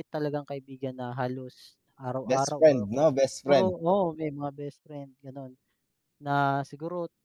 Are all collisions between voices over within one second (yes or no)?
no